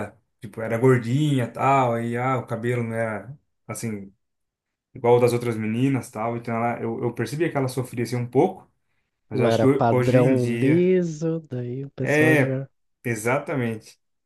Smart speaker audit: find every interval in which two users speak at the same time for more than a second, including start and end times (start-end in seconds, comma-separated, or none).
9.3-10.9